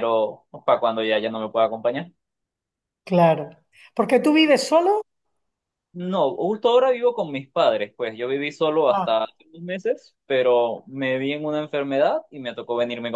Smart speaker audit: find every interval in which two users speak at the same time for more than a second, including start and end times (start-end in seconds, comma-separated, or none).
none